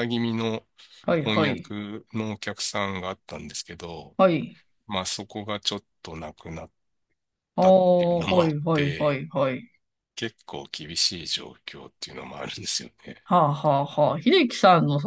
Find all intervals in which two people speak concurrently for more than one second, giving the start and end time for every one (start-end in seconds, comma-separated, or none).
7.6-9.2